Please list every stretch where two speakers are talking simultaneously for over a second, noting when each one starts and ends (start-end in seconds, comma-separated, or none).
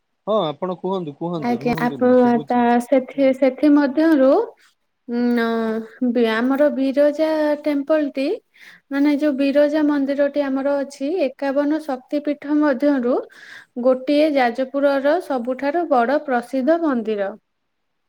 1.5-4.2